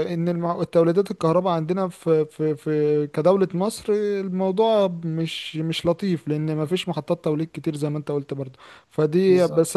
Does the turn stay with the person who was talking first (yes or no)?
yes